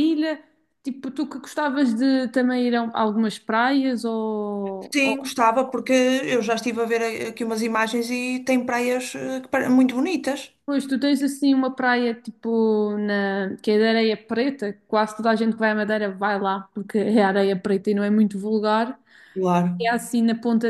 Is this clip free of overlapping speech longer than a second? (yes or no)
yes